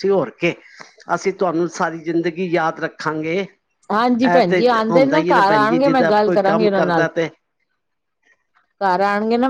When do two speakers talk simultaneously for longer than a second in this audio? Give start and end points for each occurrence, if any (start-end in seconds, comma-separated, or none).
4.1-7.1